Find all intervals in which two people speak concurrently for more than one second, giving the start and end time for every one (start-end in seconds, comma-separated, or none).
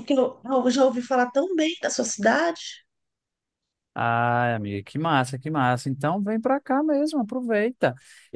none